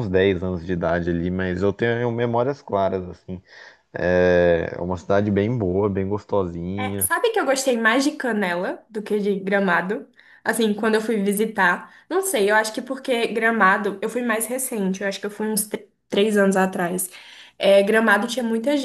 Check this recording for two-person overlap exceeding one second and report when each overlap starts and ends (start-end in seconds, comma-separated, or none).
none